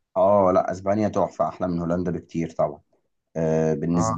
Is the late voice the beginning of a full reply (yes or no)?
yes